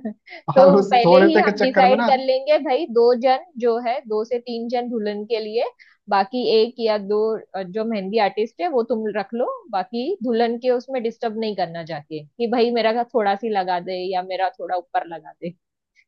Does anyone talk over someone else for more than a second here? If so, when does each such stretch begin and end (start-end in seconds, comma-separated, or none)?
0.6-2.1